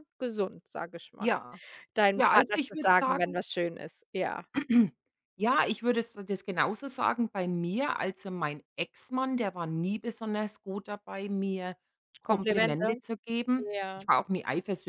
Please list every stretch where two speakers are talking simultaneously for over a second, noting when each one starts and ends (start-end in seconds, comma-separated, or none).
2.1-3.4